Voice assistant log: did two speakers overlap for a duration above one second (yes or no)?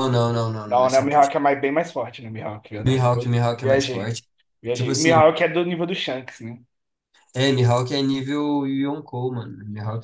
yes